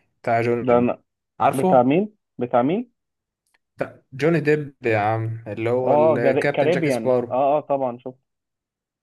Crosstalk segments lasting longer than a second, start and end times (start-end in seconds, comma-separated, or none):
5.9-7.4